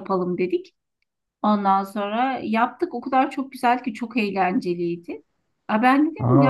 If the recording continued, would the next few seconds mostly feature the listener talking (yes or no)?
no